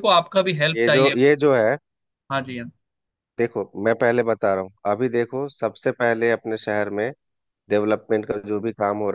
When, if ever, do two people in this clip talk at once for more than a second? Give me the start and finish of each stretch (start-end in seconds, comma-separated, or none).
none